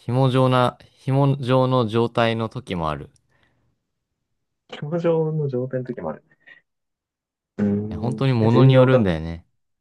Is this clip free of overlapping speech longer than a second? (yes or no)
no